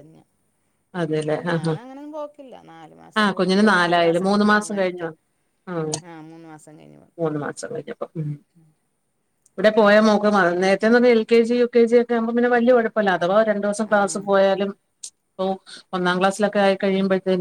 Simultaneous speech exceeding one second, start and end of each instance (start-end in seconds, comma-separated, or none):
3.2-5.1